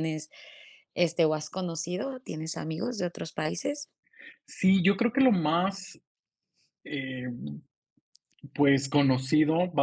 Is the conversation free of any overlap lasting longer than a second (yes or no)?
yes